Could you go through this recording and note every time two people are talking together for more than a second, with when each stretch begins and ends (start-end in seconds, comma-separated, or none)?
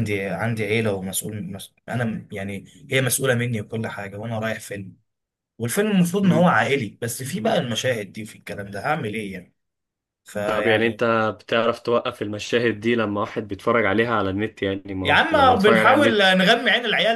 15.0-16.3